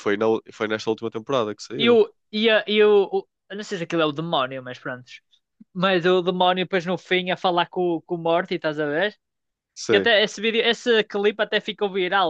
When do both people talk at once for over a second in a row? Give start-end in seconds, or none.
none